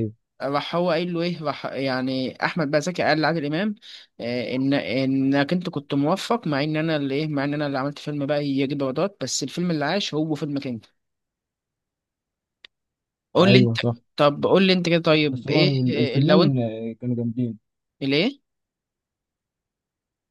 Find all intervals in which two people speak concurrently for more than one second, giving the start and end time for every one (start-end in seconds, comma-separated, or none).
15.3-16.6